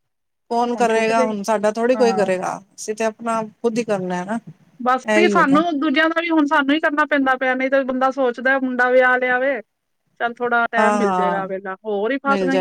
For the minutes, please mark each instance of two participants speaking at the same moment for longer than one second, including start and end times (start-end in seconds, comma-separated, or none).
none